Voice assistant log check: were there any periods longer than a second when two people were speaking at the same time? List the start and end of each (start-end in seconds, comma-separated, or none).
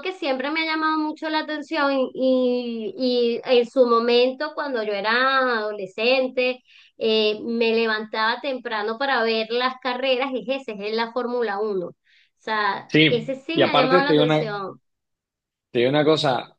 12.9-14.5